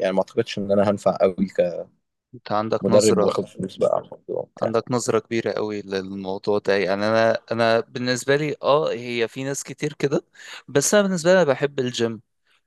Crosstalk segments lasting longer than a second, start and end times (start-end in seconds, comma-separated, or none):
none